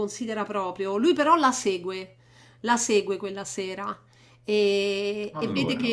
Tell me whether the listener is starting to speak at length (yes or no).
no